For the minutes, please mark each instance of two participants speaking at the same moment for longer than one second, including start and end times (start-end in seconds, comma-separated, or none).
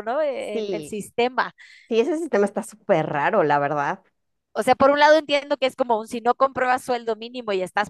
none